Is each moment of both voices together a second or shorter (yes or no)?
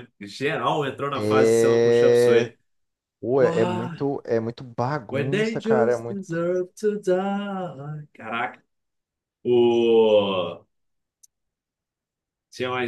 no